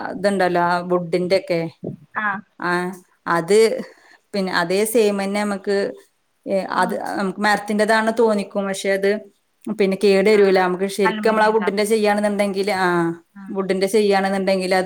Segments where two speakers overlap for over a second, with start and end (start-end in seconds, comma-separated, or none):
10.4-12.1